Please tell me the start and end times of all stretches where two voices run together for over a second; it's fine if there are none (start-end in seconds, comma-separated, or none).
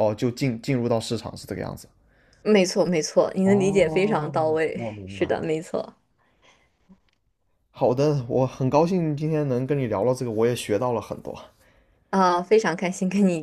3.4-5.5